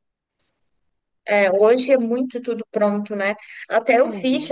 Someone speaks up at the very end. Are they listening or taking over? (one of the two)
listening